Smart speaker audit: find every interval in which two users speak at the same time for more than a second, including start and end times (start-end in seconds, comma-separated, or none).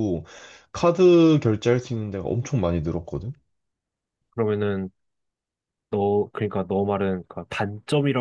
none